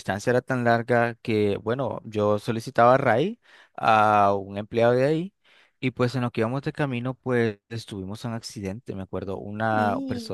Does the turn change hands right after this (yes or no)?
no